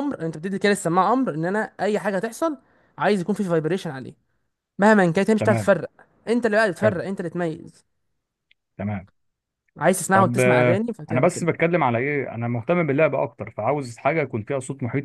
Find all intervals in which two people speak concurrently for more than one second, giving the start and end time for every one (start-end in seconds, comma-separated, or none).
10.1-11.5